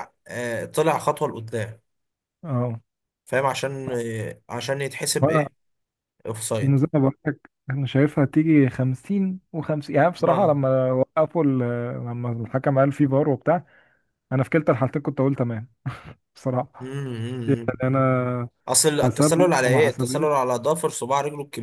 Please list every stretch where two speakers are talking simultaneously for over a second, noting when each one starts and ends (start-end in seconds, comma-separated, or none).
19.0-20.3